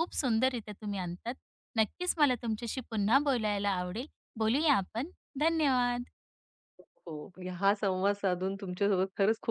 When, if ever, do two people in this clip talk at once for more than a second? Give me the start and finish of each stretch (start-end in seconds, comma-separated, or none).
none